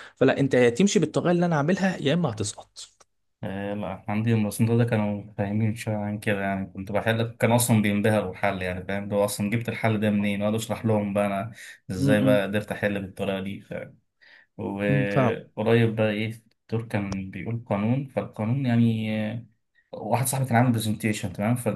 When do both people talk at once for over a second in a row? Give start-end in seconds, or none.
none